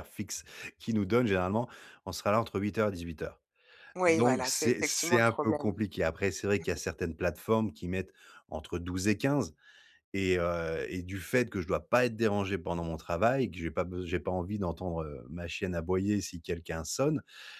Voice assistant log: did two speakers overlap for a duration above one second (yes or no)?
yes